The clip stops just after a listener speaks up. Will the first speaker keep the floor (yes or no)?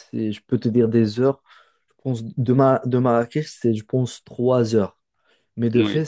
yes